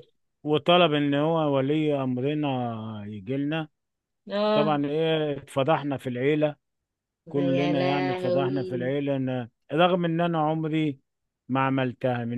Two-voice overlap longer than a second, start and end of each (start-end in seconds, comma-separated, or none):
7.3-8.9